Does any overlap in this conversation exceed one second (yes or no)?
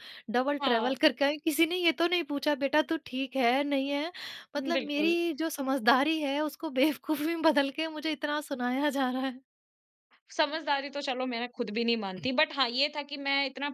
no